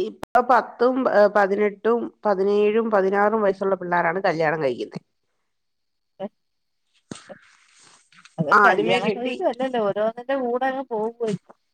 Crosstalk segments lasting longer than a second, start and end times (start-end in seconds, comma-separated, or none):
none